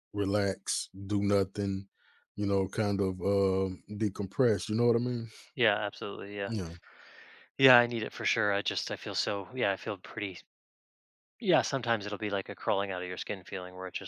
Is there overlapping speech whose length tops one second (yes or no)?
no